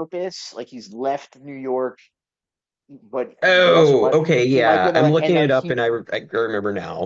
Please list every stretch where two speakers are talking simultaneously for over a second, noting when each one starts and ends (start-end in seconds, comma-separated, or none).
3.4-5.7